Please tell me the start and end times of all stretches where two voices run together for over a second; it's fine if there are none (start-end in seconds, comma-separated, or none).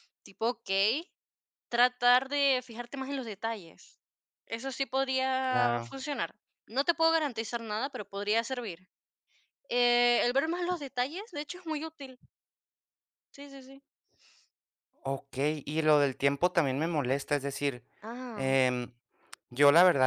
none